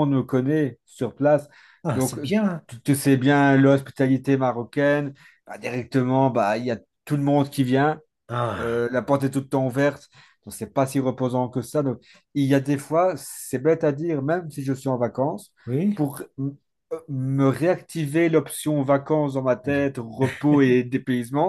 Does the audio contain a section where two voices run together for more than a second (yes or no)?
no